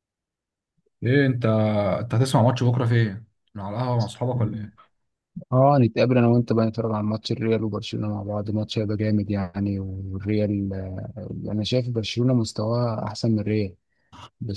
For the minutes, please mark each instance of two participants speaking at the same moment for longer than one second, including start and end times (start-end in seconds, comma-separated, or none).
none